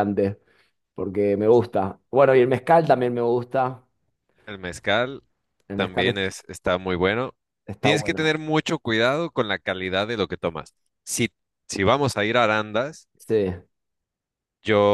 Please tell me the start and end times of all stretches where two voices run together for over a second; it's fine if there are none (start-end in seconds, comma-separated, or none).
none